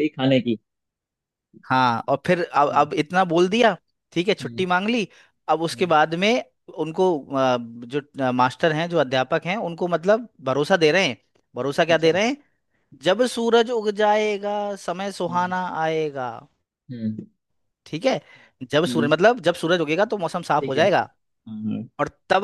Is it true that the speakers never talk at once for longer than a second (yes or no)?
yes